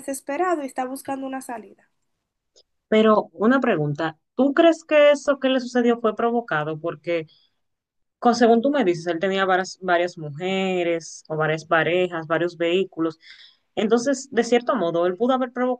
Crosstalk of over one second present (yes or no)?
no